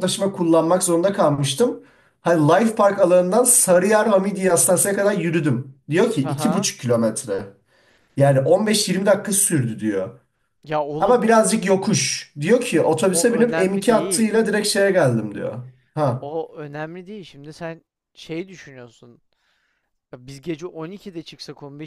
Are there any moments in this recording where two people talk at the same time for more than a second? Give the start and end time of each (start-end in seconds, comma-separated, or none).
13.1-14.4